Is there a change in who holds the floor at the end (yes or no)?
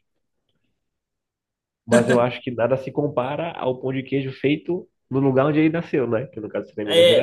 yes